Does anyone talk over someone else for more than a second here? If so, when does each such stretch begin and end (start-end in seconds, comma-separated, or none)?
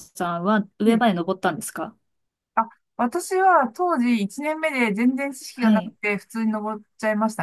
none